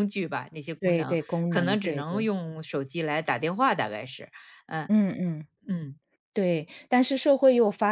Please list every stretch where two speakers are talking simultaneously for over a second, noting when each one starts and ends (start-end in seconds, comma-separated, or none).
0.8-2.3